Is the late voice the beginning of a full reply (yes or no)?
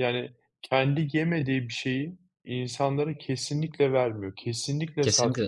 yes